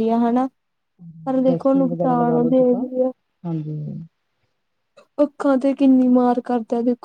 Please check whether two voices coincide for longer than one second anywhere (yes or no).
yes